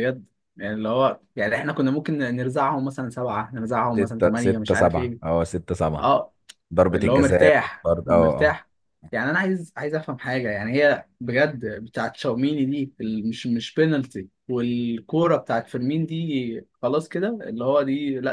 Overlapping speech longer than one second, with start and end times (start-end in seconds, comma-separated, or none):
4.0-5.3, 6.9-8.6